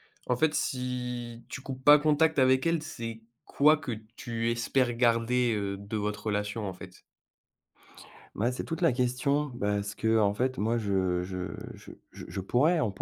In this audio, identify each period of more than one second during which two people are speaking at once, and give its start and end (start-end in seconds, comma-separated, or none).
none